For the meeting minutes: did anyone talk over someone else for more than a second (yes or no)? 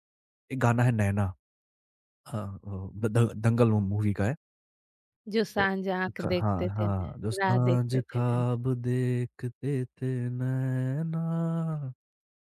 yes